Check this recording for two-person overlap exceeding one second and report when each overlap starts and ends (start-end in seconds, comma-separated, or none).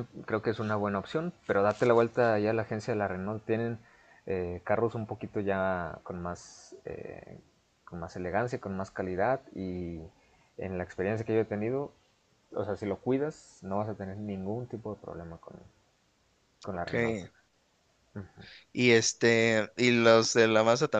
none